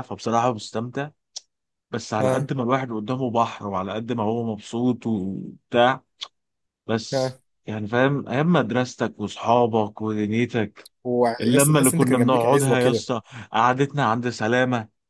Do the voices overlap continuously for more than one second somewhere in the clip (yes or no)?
yes